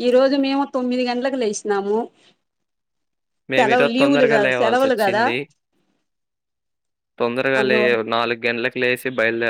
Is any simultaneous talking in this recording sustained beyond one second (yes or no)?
yes